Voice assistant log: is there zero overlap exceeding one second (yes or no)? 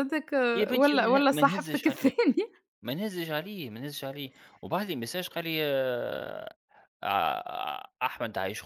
no